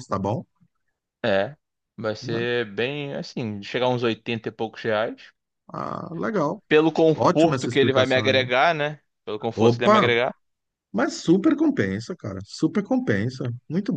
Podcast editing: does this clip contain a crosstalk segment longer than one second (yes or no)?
yes